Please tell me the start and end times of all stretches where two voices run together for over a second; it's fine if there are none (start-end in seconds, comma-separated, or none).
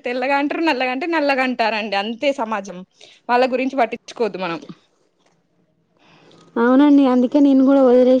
none